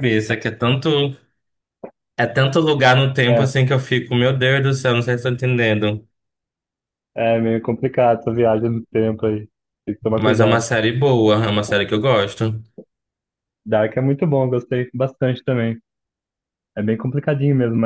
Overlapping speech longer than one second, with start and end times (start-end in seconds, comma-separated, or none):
none